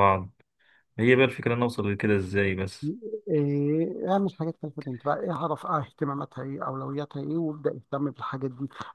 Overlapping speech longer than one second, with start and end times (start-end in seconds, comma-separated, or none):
none